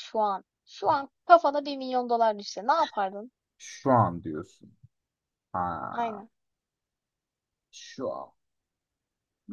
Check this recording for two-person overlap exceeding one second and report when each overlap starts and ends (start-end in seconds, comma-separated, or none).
none